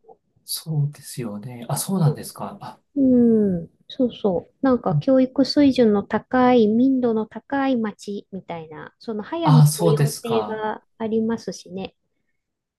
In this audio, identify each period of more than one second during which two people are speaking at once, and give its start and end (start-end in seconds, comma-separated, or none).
9.4-10.6